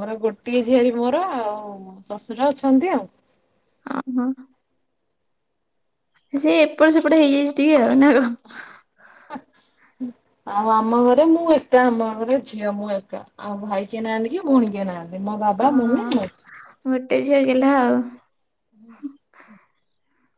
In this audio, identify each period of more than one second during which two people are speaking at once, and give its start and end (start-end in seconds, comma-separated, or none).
none